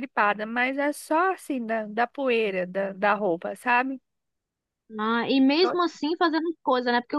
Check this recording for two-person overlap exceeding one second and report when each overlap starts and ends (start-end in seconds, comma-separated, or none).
none